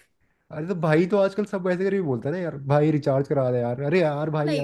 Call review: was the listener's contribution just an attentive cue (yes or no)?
no